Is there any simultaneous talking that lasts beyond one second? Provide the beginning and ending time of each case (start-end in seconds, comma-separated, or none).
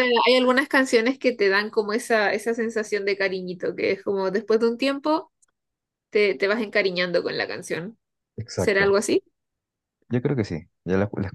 none